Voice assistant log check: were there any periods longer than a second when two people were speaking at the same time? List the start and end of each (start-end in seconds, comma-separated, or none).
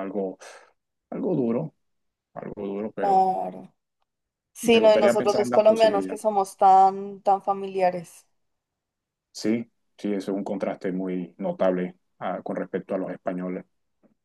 4.7-6.2